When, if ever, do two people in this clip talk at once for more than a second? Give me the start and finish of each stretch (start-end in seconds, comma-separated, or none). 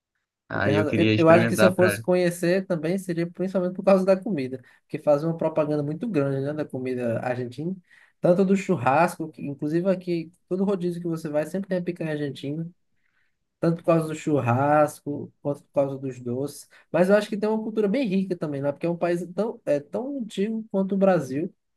0.5-2.0